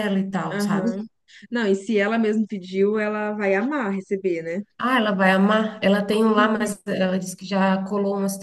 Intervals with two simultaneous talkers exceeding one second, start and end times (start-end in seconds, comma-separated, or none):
none